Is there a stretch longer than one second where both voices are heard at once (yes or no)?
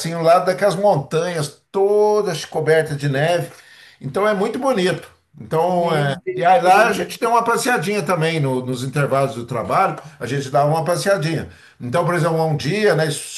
yes